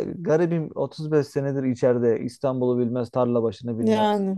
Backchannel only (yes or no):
yes